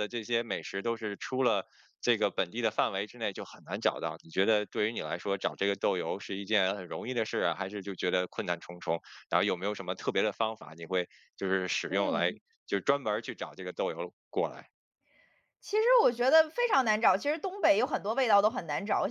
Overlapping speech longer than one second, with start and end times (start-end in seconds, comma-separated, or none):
none